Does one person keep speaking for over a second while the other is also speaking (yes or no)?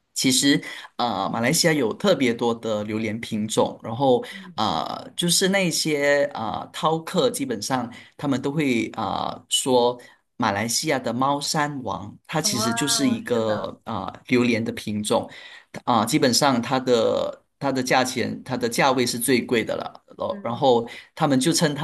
yes